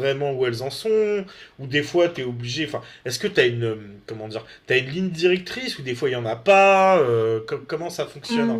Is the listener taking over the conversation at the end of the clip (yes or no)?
yes